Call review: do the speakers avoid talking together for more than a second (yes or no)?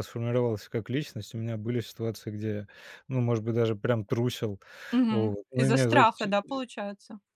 no